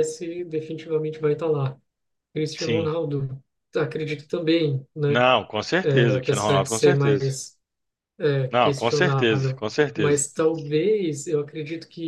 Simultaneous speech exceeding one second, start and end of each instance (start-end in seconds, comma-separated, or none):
5.9-7.2, 8.5-10.2